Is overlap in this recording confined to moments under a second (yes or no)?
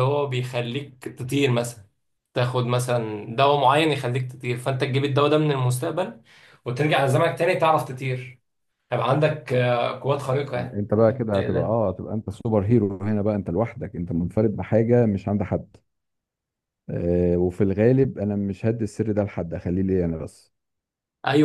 no